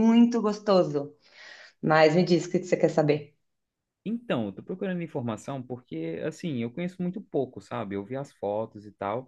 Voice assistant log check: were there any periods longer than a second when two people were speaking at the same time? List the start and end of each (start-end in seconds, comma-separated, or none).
none